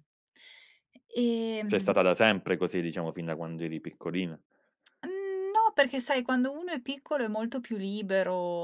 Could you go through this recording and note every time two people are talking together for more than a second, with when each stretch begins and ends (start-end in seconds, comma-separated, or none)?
none